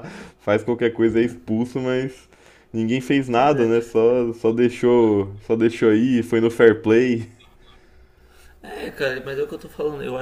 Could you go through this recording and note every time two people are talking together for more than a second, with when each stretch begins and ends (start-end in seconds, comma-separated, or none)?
none